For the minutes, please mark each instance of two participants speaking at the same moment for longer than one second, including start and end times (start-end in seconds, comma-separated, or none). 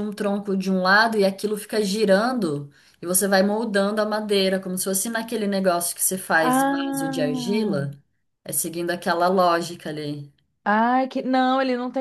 6.4-7.9